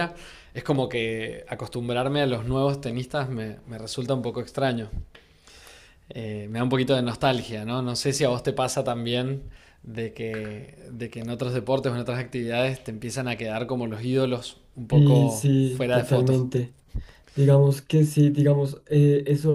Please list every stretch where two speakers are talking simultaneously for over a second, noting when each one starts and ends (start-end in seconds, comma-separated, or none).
14.9-16.4